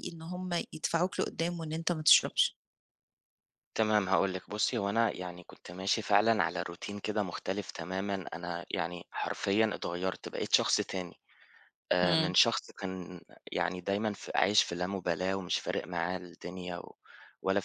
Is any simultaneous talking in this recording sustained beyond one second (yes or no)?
no